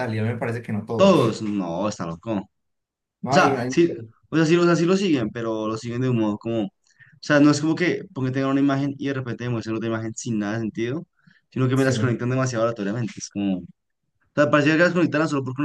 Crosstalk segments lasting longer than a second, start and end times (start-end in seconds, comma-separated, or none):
none